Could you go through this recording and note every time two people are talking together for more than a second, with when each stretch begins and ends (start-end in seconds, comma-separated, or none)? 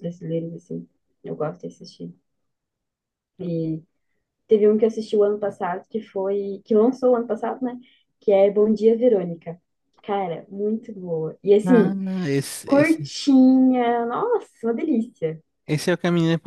none